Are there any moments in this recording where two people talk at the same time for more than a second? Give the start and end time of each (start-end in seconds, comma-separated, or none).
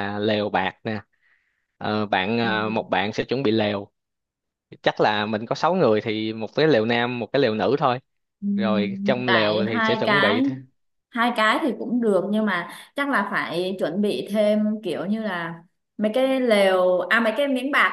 8.6-10.4